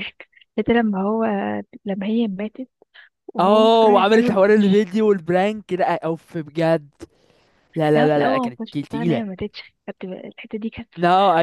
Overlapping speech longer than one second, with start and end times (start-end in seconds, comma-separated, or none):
3.4-4.8, 7.9-9.2